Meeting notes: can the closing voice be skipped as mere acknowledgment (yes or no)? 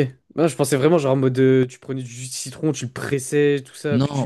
no